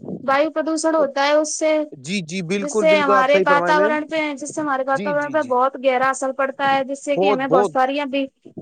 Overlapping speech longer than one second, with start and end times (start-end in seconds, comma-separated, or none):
2.6-4.0